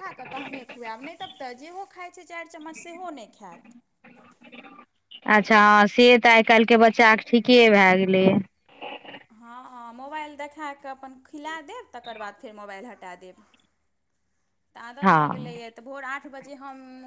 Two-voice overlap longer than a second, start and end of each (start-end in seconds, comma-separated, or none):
none